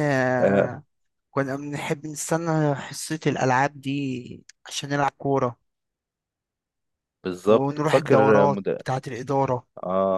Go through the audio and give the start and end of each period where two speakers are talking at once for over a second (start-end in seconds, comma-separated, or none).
7.5-8.8